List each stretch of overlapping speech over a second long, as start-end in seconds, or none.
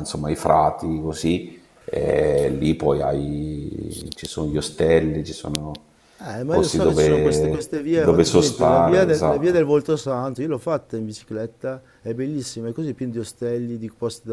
6.4-9.6